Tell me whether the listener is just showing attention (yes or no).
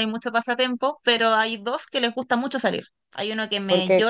yes